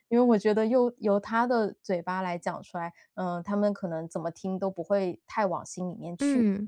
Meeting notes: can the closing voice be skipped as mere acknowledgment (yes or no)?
no